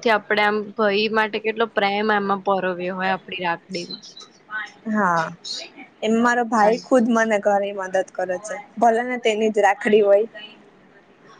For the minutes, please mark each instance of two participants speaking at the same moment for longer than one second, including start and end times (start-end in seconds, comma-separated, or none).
none